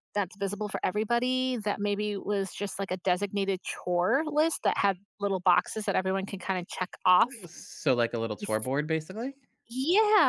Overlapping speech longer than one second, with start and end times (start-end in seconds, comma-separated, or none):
none